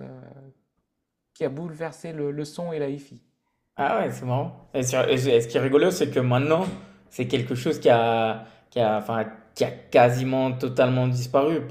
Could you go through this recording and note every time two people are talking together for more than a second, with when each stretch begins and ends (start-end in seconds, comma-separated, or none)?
none